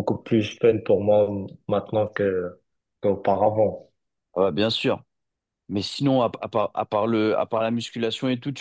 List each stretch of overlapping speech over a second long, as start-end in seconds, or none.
none